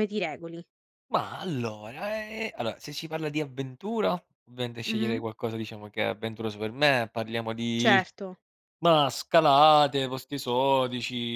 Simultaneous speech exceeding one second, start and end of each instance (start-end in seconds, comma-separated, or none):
none